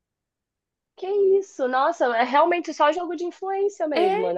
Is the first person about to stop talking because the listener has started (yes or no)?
yes